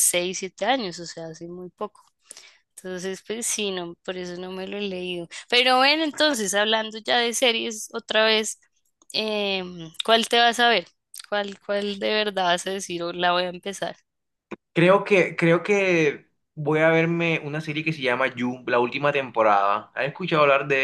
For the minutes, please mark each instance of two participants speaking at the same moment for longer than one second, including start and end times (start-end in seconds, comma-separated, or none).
none